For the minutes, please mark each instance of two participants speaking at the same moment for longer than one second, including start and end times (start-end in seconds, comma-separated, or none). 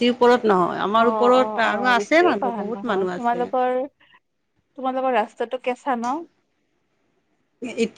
1.1-3.4